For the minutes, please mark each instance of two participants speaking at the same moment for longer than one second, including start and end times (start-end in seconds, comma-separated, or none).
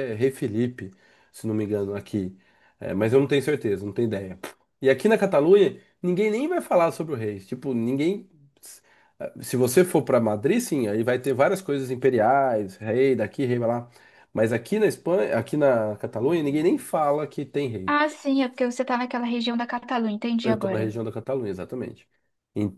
none